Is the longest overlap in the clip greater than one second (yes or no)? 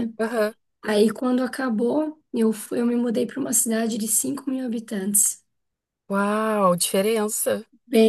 no